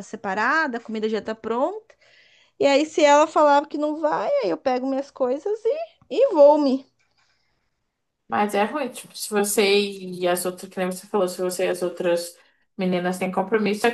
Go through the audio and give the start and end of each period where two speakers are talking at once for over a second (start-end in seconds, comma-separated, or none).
none